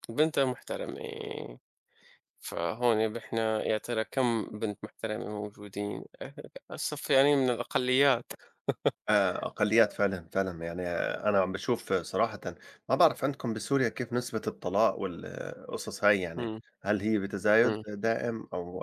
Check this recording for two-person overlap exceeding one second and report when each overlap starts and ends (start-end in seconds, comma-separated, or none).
none